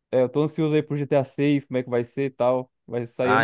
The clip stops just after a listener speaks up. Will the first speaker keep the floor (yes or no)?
no